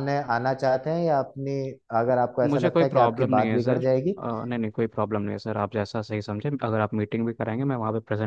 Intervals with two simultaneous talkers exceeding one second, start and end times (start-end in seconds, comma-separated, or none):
2.5-4.1